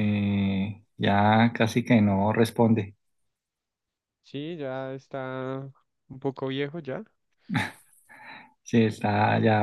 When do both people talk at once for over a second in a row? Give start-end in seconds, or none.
none